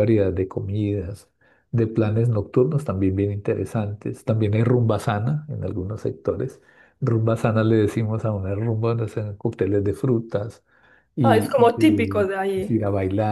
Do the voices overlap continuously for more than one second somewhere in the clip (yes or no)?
yes